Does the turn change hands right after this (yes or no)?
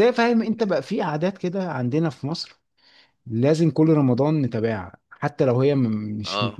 no